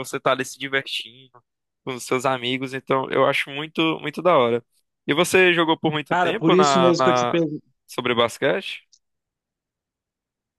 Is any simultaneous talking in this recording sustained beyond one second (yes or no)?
yes